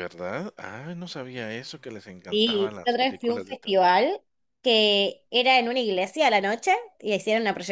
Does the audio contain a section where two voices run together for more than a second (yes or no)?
yes